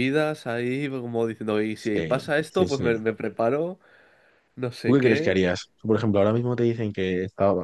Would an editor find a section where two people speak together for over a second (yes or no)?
yes